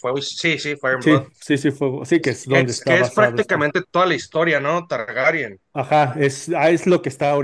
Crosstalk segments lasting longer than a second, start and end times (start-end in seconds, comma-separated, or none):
2.2-3.6